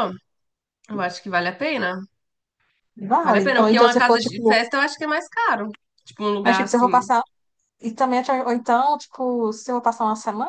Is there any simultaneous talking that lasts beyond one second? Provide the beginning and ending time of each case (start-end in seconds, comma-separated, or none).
3.2-4.6